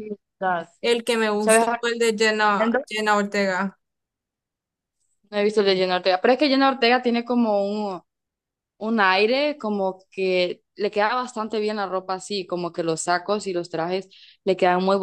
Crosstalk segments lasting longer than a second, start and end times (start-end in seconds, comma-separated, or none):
none